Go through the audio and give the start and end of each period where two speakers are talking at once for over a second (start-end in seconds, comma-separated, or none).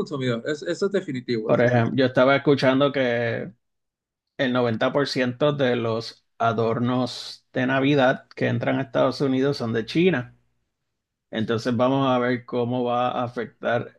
none